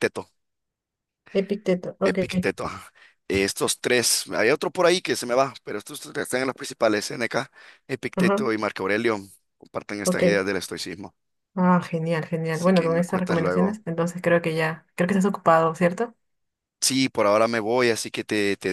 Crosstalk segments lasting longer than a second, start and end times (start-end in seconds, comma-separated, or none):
12.5-13.8